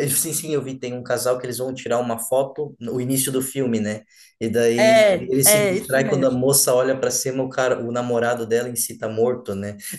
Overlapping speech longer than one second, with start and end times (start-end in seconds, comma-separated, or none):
4.8-6.4